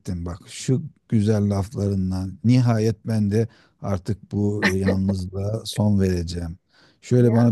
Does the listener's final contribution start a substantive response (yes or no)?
no